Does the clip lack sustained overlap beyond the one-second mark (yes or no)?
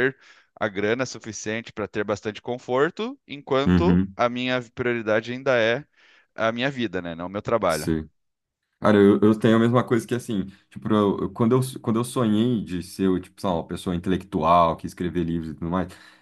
yes